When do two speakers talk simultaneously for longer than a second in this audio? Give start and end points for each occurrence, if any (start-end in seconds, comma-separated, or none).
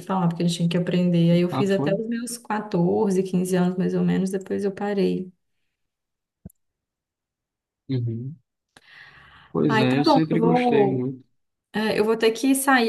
9.7-11.1